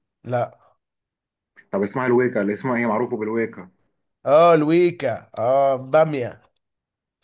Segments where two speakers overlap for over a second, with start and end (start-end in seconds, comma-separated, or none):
none